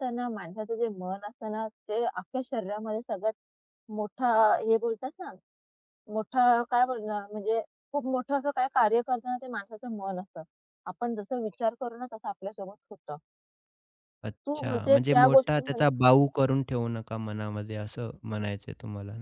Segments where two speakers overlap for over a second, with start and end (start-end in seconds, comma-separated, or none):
14.4-15.8